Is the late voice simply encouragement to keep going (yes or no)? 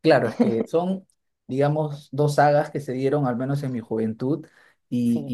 yes